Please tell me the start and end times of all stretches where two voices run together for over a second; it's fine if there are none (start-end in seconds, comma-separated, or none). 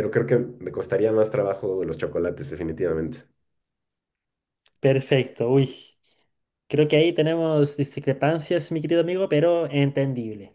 none